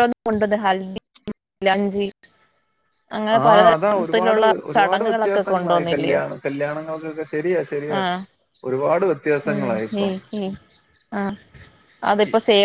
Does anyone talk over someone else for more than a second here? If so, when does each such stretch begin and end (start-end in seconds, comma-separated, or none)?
4.7-6.2